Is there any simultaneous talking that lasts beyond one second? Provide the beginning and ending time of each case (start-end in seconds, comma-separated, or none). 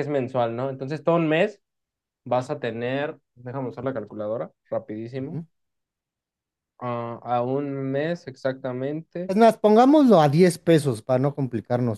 none